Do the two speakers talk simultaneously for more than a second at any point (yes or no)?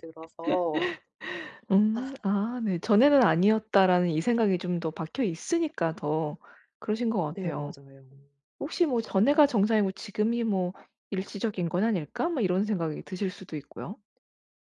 no